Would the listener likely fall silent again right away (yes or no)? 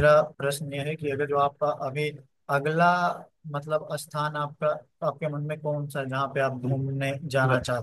no